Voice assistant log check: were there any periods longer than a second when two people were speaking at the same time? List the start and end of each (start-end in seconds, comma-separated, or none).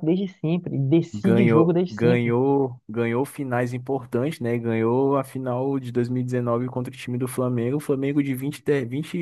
1.1-2.4